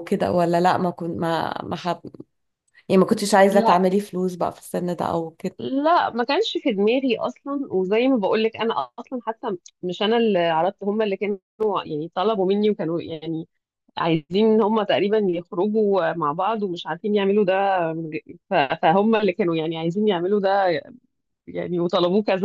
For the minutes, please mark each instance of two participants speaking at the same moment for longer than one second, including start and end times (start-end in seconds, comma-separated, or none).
none